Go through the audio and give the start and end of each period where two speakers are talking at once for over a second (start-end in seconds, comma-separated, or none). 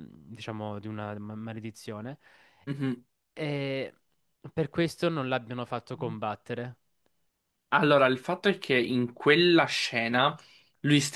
none